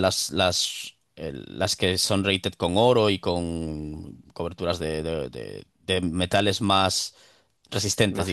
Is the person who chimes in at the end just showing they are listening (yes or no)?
yes